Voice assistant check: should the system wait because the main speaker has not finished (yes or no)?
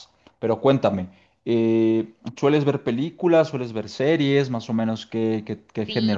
no